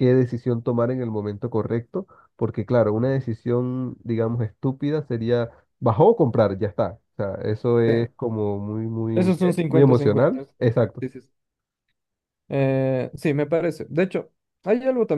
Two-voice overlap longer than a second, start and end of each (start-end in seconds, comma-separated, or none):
9.1-11.0